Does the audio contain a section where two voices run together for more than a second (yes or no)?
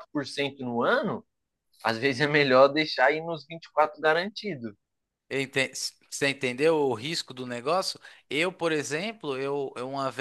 no